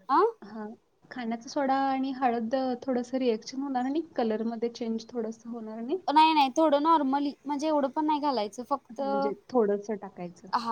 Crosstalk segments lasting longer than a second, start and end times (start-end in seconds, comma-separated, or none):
none